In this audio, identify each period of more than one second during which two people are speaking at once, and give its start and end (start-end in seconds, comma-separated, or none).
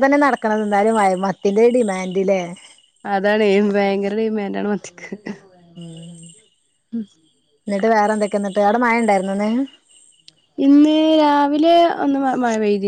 none